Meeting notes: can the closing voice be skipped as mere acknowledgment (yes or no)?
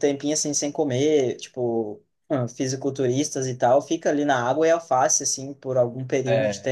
yes